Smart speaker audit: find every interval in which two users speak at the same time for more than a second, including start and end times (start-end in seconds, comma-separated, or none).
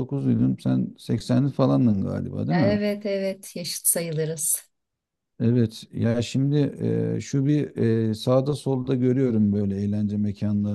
none